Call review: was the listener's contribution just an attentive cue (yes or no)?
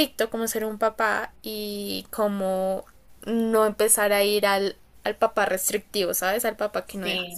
no